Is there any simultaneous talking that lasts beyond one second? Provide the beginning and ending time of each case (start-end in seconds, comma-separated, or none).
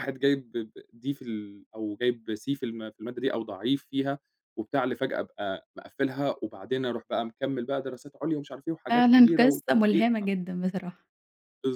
8.9-10.1